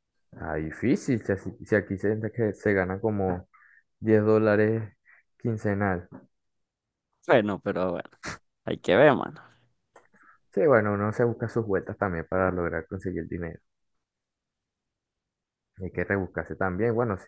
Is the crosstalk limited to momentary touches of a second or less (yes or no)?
yes